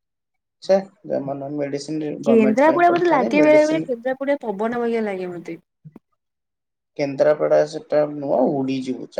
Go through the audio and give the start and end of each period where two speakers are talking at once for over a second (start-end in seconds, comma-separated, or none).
2.3-3.9